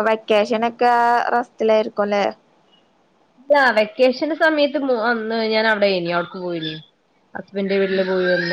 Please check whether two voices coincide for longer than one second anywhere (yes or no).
no